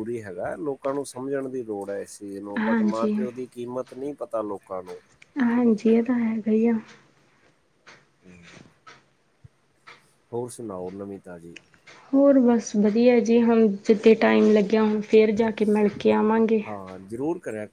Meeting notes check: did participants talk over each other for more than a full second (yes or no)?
no